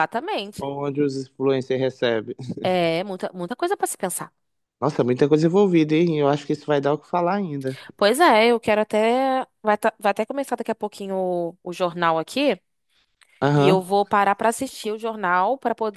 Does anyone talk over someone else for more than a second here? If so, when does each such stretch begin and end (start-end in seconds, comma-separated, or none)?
none